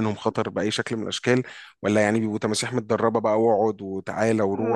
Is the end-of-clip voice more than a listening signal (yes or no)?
yes